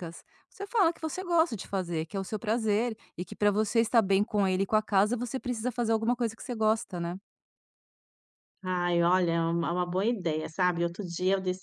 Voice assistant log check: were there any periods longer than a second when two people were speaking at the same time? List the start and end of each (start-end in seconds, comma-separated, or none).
none